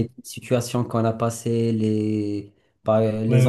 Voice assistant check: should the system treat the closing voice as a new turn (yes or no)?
yes